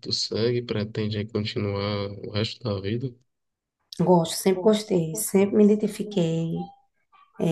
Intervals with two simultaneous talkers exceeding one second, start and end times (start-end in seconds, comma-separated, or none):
4.5-6.6